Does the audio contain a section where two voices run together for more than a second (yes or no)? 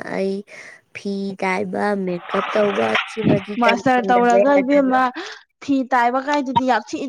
yes